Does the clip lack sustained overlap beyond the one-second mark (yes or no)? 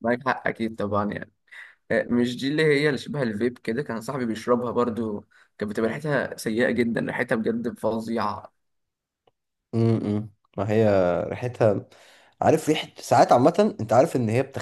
yes